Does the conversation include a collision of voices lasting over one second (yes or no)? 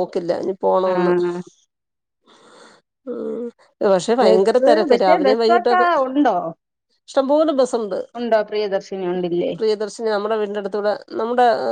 yes